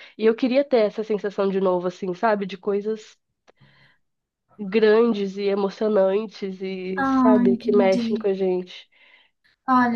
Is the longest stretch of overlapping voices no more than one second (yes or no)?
no